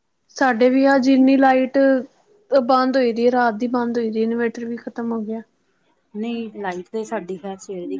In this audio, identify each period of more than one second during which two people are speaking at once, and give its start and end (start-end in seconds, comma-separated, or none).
none